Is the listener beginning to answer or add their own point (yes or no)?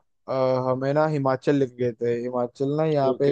no